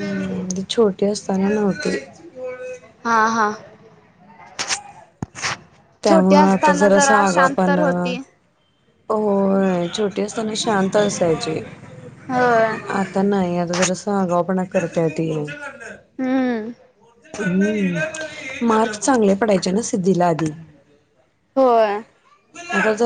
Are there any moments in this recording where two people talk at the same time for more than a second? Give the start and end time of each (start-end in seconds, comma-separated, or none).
6.1-7.8